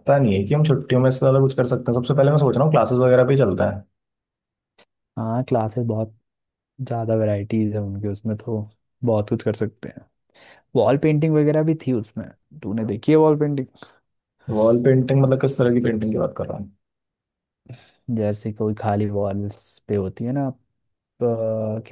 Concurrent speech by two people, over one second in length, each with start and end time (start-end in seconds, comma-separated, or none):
none